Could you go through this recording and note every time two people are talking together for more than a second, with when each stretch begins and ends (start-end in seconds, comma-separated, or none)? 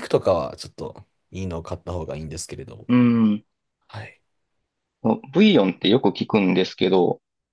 none